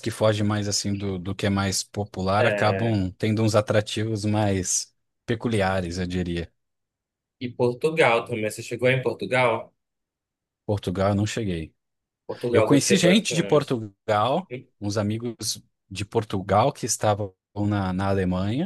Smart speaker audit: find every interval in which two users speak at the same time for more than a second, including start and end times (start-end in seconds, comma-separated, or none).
12.5-13.8